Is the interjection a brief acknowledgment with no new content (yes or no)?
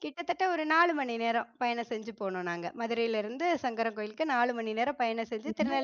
no